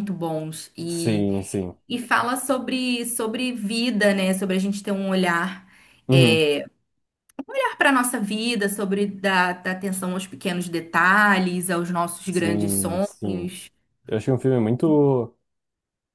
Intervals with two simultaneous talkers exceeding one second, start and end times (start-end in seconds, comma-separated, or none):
12.3-13.5